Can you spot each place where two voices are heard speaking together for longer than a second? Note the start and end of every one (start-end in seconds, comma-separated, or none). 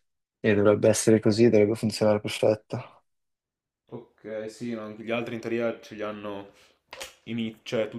none